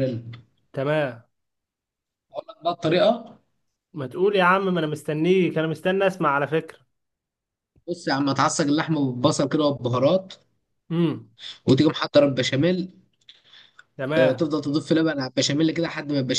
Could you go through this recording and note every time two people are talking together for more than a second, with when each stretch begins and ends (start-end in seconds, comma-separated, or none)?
none